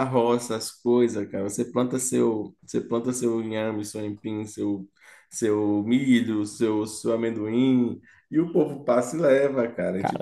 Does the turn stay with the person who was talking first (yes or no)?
no